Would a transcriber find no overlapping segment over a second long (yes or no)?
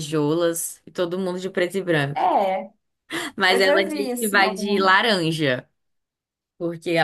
no